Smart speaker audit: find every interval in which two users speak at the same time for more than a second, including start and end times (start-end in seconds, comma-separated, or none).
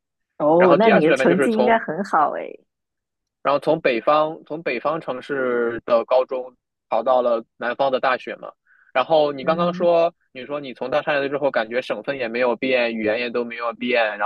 0.6-1.8